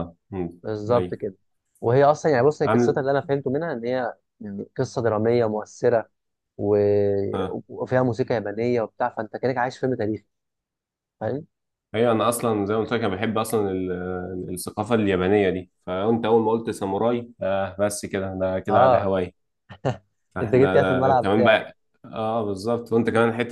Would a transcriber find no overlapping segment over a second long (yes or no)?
no